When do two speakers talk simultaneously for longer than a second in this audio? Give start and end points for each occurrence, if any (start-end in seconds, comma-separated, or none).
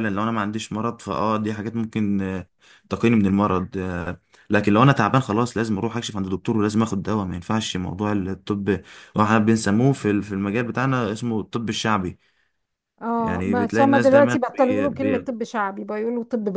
13.2-15.3